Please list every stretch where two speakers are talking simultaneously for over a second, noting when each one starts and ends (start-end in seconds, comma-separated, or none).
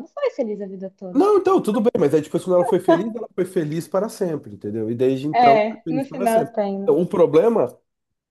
5.3-7.0